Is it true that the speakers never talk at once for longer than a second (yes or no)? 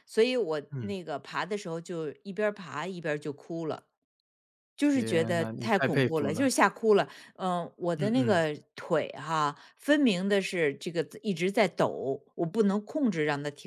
no